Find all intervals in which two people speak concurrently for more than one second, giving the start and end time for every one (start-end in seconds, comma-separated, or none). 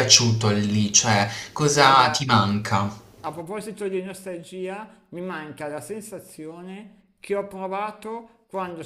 none